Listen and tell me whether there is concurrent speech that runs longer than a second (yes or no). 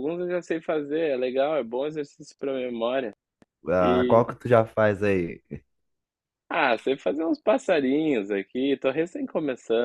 no